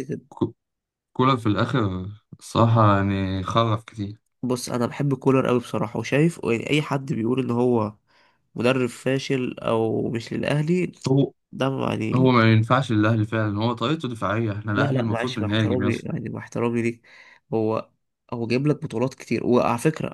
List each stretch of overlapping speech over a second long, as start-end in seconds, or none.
14.8-16.1